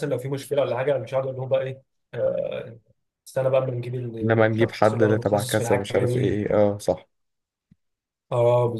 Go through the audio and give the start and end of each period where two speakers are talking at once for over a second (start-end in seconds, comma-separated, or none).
4.2-6.4